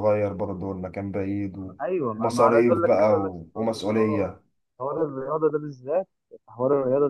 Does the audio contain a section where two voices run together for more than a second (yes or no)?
yes